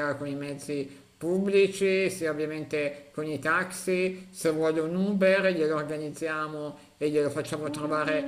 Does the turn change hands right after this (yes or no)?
yes